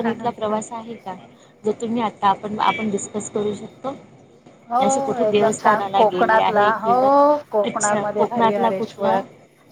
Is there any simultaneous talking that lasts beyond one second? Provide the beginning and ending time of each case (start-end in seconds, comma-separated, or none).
5.3-6.9, 7.7-9.2